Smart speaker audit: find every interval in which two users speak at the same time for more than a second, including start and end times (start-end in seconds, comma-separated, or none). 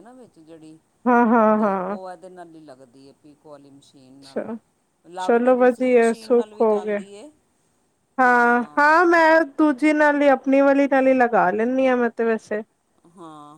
5.2-7.0